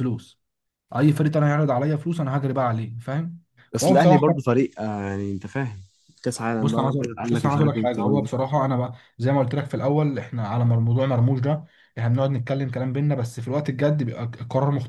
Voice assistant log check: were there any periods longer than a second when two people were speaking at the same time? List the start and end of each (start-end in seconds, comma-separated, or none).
6.6-8.3